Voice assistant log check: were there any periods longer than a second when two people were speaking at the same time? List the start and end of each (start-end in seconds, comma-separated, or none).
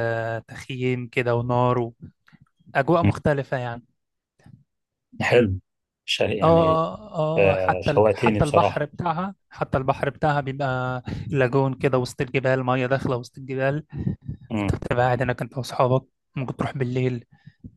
7.5-8.9